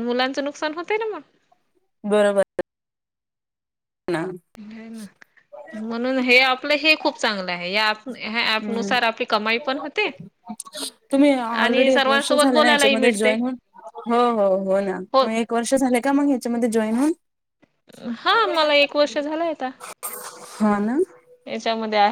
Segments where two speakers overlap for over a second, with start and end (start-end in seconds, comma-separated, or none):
11.5-13.3